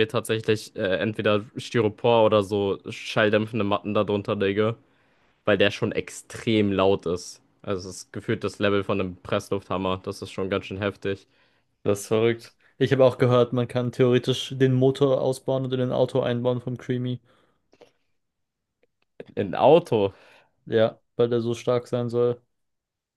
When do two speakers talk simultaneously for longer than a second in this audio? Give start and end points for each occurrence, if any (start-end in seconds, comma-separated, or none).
none